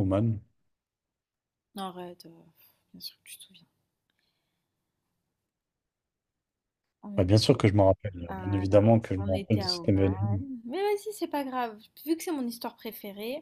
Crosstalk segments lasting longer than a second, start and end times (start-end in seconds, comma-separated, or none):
8.3-10.4